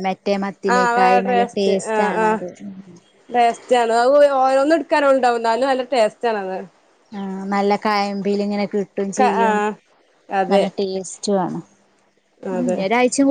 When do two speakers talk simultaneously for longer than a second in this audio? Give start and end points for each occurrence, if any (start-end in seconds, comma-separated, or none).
0.7-2.4